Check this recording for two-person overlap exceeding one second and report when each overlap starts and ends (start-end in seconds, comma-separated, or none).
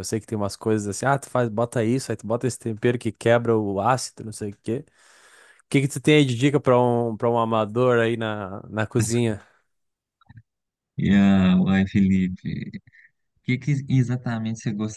none